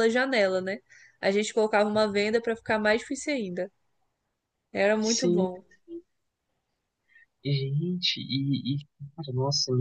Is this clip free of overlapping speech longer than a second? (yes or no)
yes